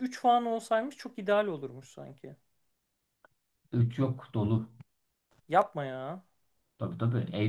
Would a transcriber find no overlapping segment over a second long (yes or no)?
yes